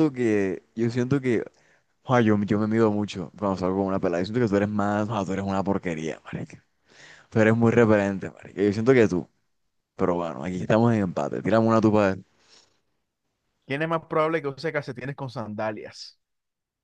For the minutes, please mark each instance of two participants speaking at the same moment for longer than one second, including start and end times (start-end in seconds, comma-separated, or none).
none